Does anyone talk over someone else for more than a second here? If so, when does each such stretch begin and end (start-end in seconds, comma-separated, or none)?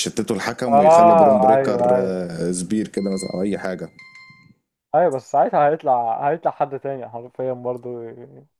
0.7-2.2